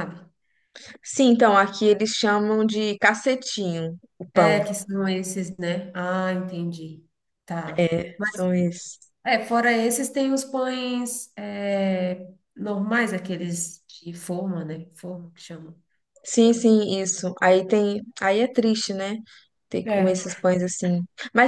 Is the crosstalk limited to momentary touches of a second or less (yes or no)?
yes